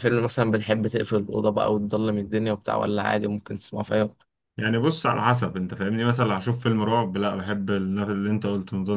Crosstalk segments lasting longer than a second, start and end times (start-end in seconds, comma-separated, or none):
none